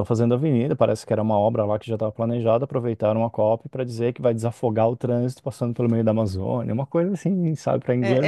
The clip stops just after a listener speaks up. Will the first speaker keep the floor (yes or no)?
no